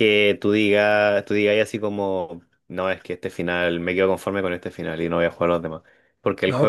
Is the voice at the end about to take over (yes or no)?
no